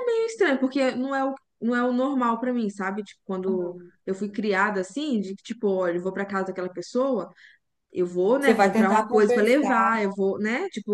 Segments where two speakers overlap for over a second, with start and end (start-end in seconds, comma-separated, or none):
8.4-9.9